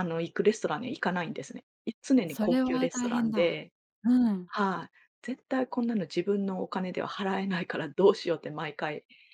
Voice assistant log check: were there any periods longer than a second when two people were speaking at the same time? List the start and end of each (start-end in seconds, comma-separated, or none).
2.3-3.6